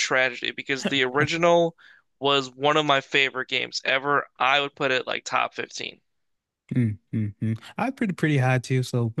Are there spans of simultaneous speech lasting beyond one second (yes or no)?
no